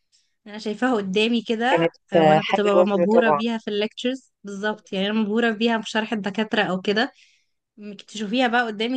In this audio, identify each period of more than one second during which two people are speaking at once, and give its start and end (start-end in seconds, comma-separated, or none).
1.7-3.4